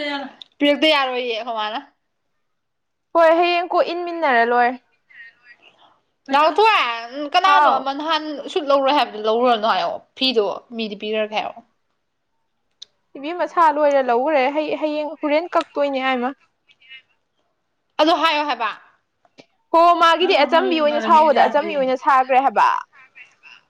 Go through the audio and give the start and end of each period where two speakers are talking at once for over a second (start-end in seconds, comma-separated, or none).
20.2-21.9